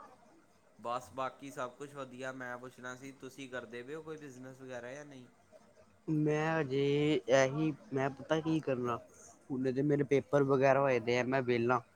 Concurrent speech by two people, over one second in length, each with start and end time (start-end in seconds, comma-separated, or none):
none